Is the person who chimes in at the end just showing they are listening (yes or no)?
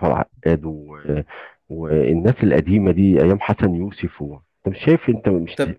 no